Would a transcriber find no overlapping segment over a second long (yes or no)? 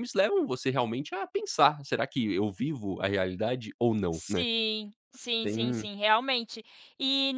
yes